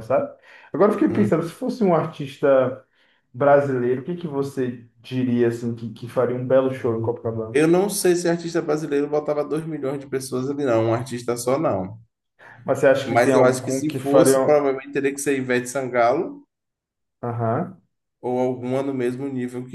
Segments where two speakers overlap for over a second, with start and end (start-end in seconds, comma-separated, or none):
13.1-14.6